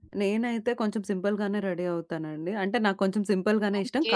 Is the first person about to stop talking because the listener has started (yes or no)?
no